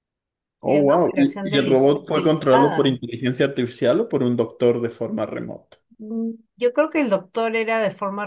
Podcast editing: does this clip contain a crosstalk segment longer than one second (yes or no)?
yes